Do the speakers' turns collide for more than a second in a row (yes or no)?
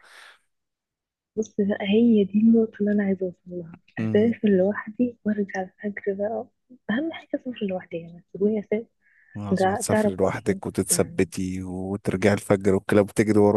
yes